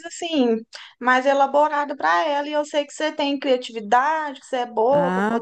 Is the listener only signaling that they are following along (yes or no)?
no